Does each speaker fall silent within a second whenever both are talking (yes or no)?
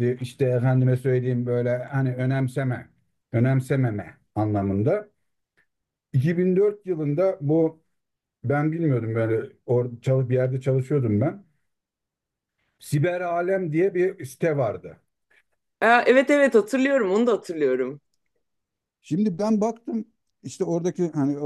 yes